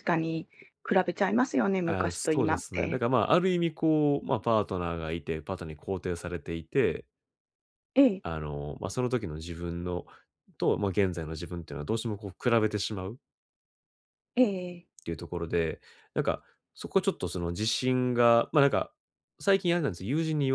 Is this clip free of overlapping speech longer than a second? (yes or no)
no